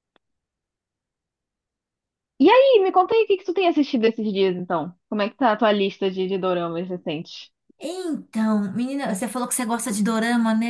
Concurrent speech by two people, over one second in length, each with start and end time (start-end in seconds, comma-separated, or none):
none